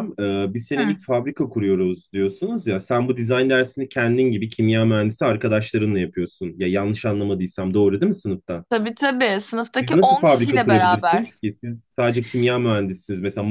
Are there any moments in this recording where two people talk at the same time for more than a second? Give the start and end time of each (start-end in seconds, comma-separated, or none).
9.8-11.3